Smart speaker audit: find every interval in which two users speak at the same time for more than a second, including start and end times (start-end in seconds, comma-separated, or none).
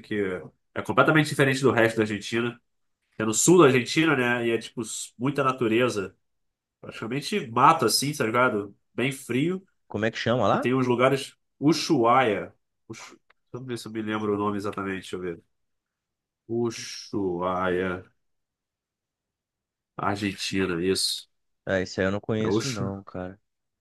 none